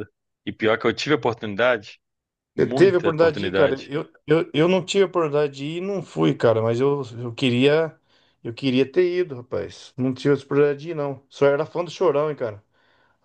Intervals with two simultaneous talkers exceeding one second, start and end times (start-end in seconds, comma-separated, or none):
2.6-3.9